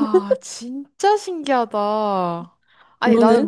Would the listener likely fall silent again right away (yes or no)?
yes